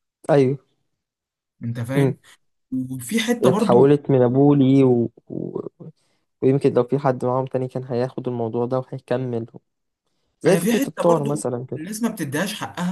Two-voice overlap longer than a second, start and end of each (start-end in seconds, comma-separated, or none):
10.4-11.8